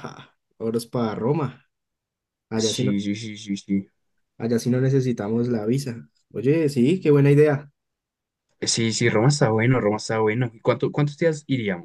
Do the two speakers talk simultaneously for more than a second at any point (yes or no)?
no